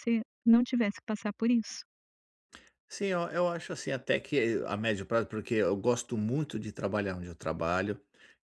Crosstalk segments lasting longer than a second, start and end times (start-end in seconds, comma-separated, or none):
none